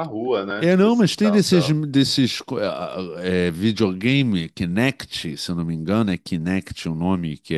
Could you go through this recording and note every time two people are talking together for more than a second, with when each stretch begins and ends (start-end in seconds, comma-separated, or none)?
0.5-1.8